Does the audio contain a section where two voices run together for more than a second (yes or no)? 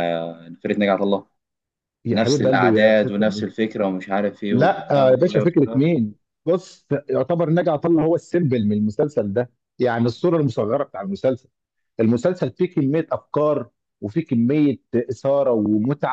yes